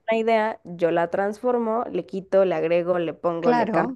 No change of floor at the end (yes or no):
no